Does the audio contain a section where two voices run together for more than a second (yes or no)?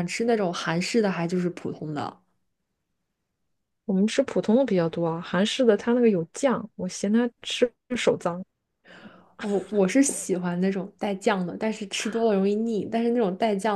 no